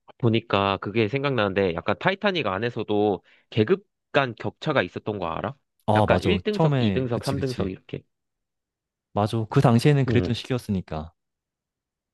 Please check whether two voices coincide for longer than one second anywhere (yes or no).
yes